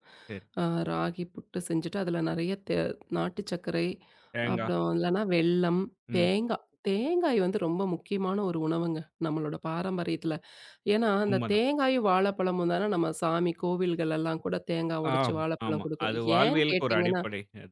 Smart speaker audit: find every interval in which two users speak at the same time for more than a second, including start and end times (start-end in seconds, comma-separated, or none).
15.2-17.2